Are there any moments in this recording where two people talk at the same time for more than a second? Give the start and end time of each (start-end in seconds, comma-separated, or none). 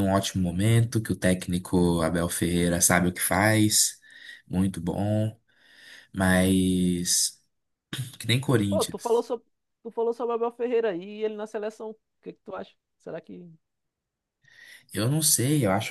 none